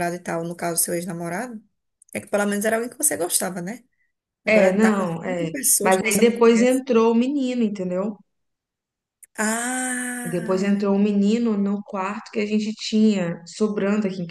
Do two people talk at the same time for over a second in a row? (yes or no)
yes